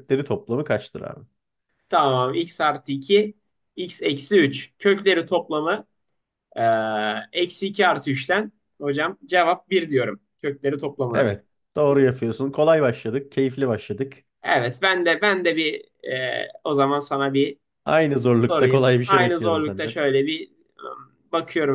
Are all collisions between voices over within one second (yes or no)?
no